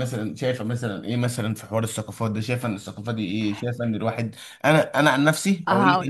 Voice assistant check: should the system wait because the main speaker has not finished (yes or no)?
yes